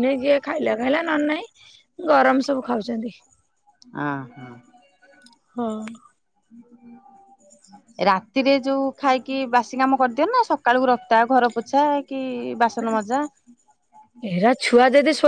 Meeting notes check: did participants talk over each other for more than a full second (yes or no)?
no